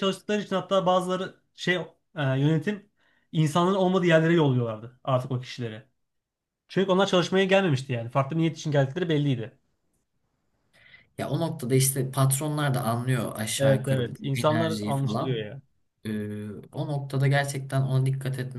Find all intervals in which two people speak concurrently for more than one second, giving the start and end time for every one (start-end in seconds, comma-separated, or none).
13.6-15.5